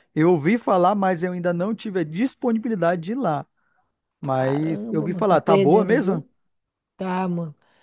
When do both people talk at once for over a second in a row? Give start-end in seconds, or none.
4.2-6.2